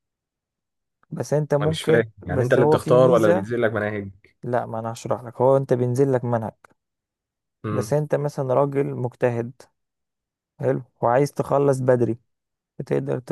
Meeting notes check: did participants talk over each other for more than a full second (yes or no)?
yes